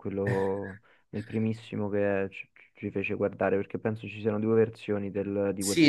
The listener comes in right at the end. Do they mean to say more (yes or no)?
yes